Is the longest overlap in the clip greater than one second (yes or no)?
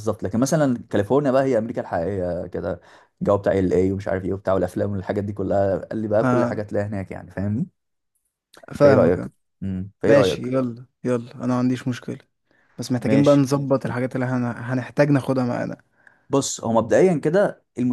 no